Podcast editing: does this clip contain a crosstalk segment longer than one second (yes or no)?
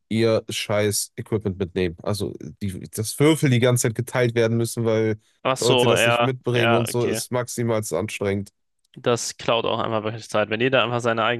yes